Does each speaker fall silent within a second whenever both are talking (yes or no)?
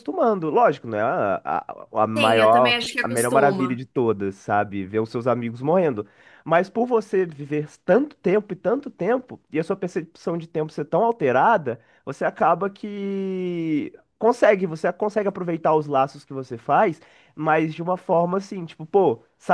no